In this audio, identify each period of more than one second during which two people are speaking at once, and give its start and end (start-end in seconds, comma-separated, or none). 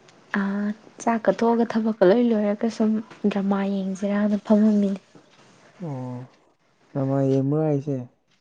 none